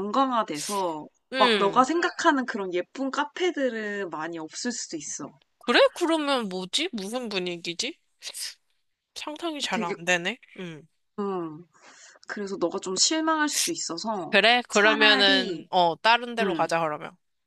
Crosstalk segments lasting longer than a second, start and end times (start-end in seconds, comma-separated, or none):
14.3-15.6